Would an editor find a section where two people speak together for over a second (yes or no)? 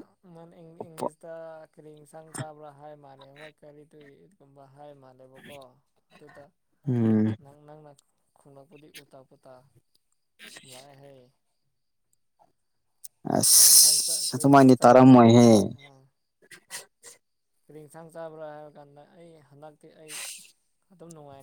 yes